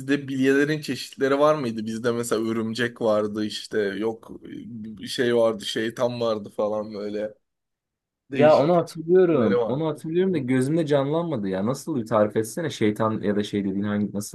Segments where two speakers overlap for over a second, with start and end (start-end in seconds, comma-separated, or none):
8.3-10.4